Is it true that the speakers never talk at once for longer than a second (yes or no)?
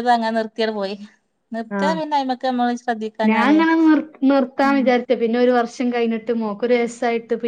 yes